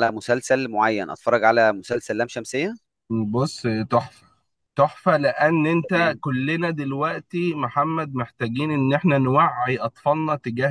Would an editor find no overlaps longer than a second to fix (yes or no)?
yes